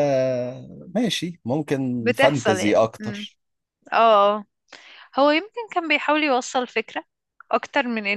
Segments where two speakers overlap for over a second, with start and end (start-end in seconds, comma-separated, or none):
2.0-3.3